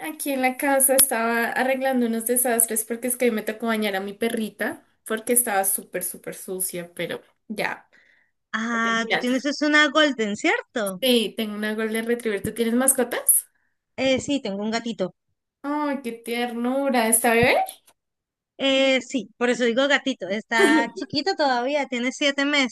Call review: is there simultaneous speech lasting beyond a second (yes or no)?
no